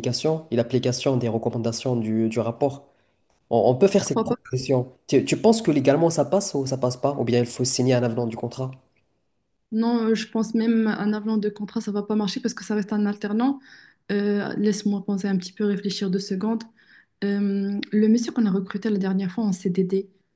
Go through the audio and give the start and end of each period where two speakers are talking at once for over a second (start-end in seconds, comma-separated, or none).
none